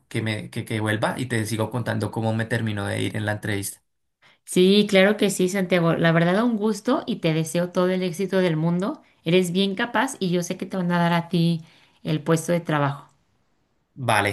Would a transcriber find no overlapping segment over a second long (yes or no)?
yes